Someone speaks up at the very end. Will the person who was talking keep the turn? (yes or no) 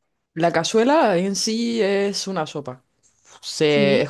yes